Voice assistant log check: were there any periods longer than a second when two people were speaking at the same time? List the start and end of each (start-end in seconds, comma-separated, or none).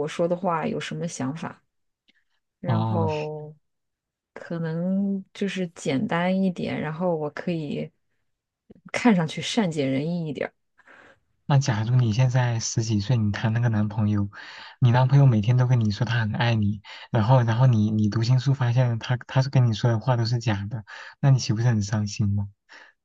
none